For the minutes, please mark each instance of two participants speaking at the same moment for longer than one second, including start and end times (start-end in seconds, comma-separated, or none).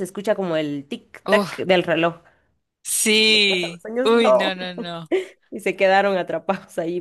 3.1-4.5